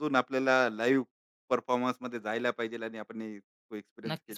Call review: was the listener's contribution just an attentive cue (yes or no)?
no